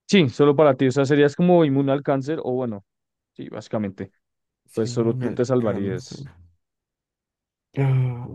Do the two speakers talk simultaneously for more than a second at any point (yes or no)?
yes